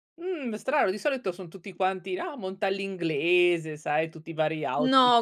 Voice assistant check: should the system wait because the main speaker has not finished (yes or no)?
no